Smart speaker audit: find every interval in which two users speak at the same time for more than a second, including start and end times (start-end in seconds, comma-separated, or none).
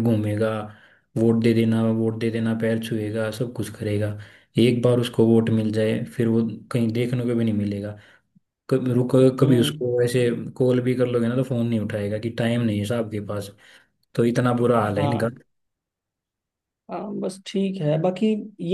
none